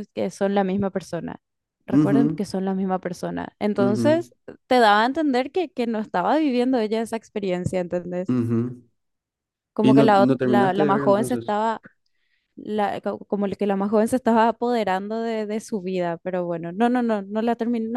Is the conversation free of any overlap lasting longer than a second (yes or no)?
no